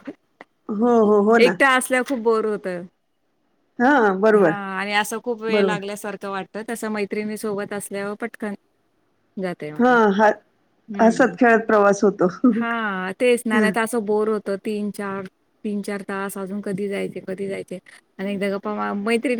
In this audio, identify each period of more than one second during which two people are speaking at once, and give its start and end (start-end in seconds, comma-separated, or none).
none